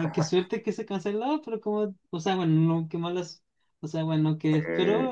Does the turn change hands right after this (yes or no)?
no